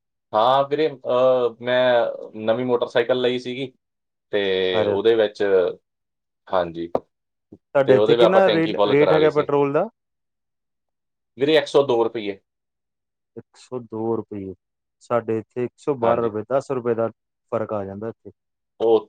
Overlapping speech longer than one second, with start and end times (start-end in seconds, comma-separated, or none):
7.8-9.5